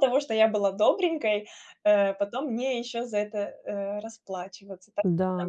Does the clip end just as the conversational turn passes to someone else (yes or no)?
yes